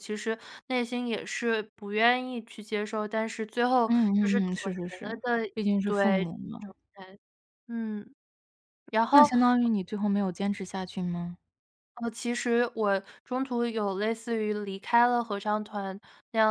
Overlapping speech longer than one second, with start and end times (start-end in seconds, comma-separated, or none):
3.9-6.3